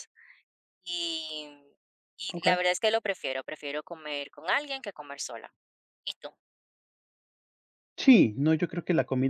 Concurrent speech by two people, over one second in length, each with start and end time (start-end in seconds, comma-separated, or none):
none